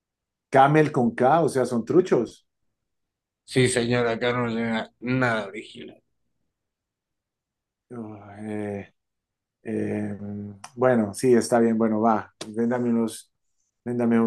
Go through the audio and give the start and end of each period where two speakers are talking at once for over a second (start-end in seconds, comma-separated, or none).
none